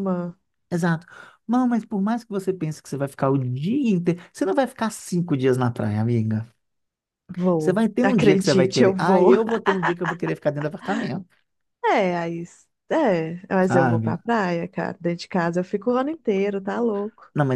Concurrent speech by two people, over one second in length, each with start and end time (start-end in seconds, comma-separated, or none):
7.6-9.3